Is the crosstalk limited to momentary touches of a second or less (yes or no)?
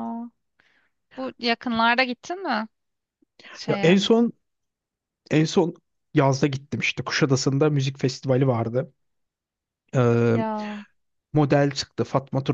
yes